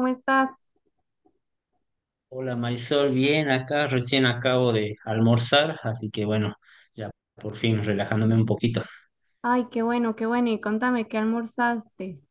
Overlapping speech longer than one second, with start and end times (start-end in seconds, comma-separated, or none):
none